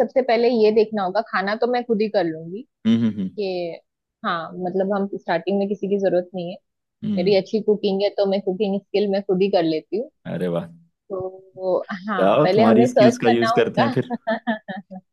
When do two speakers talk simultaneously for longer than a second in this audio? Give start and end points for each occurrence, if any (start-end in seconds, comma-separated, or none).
12.2-13.9